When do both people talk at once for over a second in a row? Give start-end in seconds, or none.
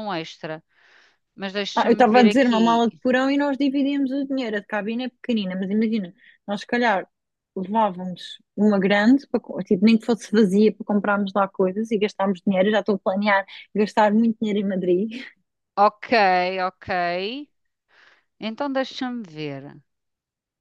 1.8-3.0